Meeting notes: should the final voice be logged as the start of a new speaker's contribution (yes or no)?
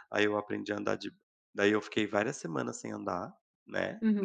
yes